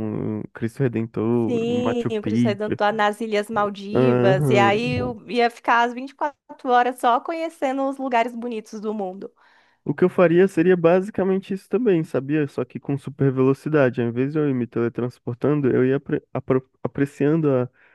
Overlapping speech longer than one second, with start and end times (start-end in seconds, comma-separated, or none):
1.5-2.7, 3.9-5.2